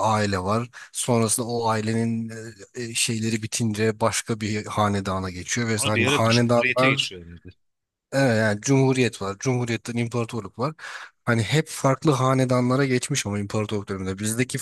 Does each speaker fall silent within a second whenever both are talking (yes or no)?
no